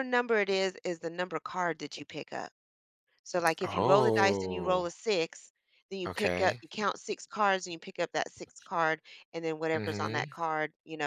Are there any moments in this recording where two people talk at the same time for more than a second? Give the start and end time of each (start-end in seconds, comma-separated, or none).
3.6-4.8